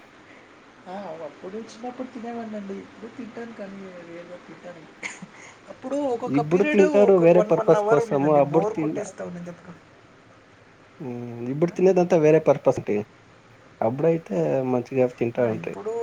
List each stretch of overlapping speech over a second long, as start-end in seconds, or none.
6.4-8.7